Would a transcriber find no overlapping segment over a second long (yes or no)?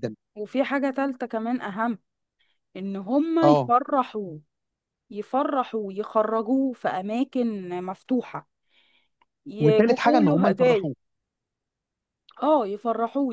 no